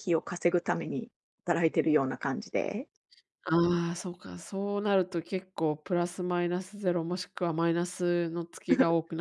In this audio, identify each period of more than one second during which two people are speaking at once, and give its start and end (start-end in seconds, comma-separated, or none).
none